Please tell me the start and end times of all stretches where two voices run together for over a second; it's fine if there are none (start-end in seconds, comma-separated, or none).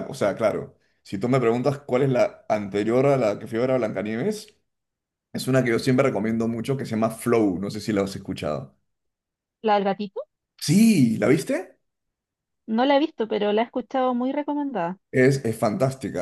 none